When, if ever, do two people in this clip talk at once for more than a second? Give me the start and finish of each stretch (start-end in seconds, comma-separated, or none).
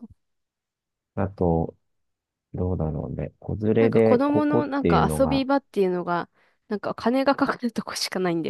3.8-5.4